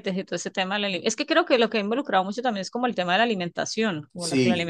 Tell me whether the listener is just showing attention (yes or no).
yes